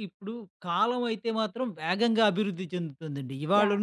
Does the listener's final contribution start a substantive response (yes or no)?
no